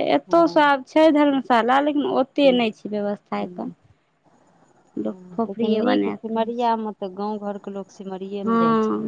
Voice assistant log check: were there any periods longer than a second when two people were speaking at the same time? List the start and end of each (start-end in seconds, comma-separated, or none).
5.0-6.7